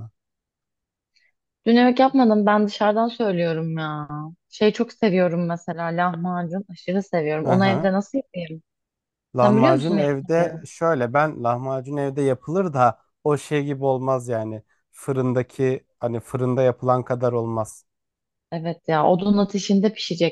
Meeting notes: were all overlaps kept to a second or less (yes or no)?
no